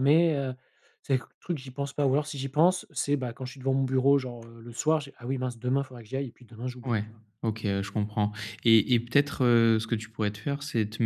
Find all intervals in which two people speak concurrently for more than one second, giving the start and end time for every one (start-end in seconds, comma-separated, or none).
none